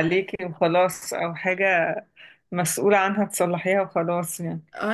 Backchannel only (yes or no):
no